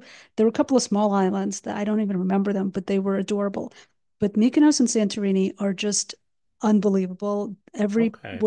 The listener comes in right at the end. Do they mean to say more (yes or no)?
no